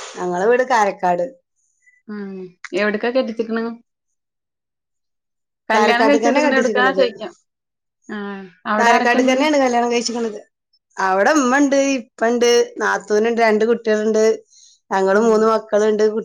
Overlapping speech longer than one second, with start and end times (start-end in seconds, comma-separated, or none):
none